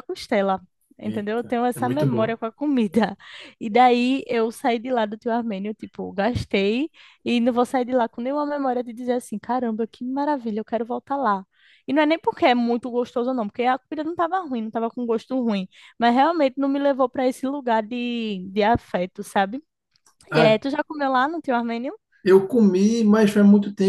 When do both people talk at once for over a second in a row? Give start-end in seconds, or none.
1.0-2.4